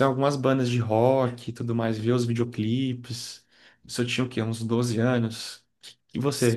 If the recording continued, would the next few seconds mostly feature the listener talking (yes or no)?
no